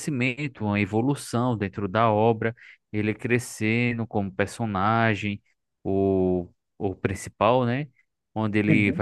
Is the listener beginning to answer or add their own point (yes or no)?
no